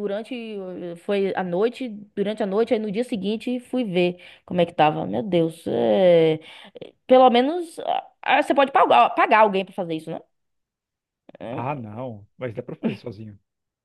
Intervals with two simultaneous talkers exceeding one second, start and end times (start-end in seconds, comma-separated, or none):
none